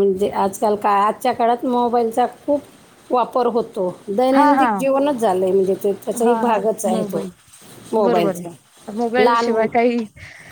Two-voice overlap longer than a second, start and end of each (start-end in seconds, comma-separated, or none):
none